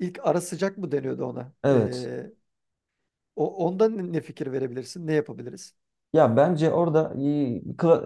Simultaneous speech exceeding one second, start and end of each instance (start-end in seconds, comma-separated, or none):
none